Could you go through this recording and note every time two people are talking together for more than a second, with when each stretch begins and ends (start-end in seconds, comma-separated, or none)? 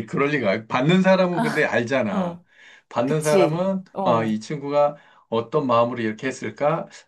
3.0-4.4